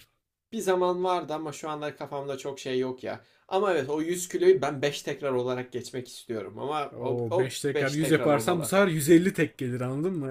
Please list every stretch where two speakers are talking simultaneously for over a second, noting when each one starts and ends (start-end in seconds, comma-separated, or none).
6.9-8.8